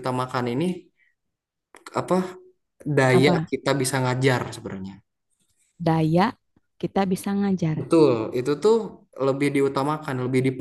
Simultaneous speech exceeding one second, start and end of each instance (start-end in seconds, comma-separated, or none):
none